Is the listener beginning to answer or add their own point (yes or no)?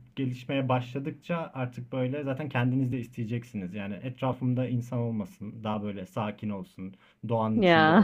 no